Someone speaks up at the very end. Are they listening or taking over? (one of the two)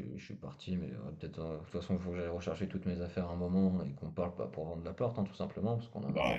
taking over